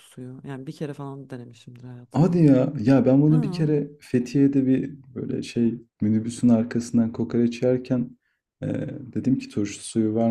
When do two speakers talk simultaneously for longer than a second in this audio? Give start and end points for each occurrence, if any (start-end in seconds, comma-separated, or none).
none